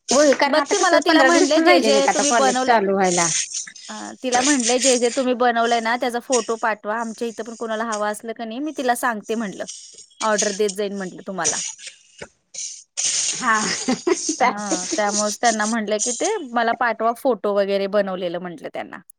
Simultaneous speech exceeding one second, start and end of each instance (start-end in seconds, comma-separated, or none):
0.5-2.8